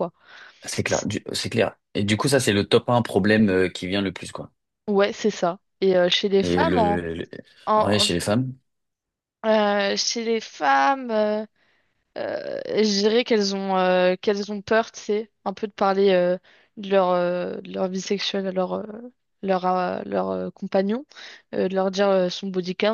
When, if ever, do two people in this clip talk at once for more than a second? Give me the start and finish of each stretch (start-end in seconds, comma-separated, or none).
none